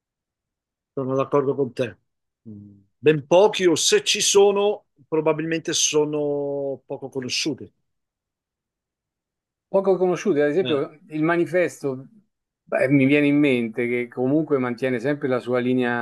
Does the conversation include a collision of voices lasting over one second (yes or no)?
no